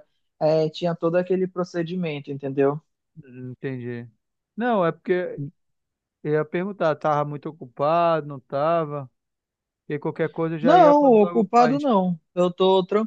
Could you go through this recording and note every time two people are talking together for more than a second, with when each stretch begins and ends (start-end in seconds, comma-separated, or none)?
10.6-11.9